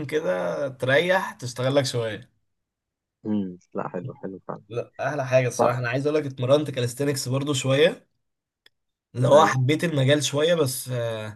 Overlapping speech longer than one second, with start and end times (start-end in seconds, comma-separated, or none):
none